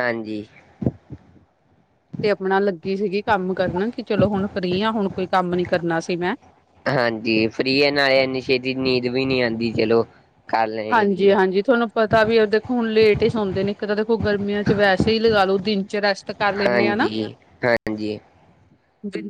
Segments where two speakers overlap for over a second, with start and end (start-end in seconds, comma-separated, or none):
none